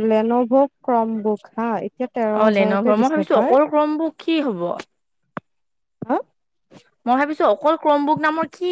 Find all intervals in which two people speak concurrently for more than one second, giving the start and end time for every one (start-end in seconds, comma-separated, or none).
none